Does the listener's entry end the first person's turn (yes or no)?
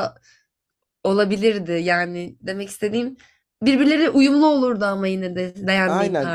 yes